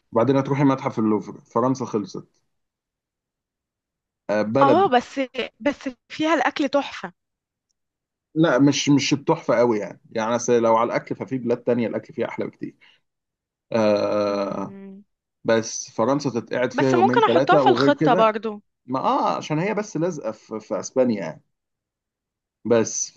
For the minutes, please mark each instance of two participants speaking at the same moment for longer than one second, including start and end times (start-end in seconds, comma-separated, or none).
16.8-18.3